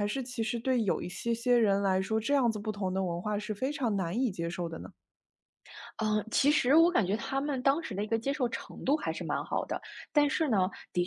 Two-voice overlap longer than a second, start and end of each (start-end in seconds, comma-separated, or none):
none